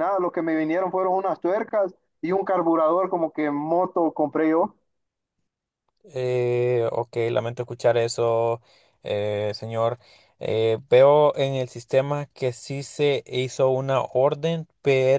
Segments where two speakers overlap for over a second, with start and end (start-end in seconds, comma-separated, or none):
none